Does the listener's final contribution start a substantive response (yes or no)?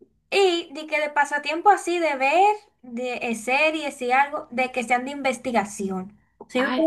no